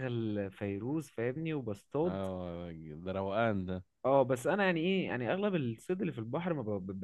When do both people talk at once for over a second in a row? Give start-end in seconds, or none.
none